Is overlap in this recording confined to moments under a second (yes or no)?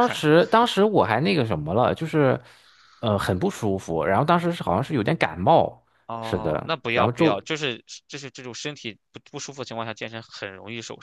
no